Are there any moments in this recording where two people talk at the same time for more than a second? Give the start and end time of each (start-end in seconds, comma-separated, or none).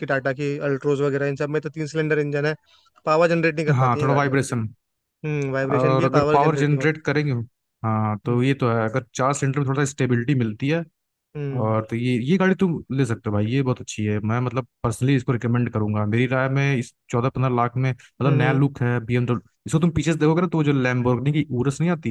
5.7-7.0